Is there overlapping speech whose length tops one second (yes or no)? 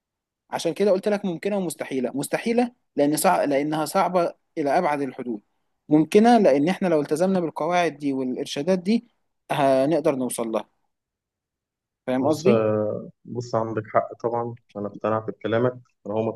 no